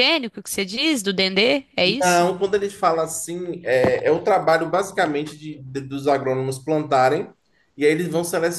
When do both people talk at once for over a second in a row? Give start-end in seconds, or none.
none